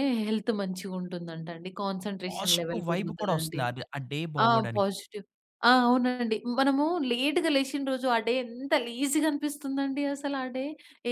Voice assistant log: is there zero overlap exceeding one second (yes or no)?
no